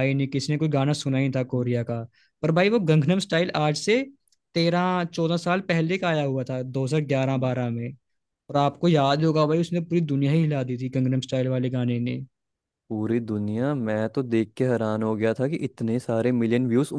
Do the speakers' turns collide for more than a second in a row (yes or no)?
no